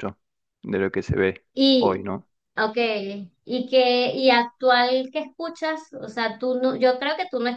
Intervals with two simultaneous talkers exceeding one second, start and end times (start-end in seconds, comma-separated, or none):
none